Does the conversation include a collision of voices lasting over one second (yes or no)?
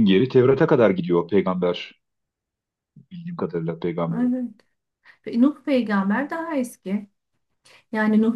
no